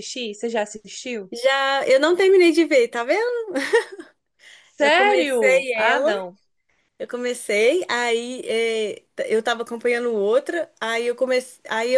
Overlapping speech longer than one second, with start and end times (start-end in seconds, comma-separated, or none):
4.8-6.1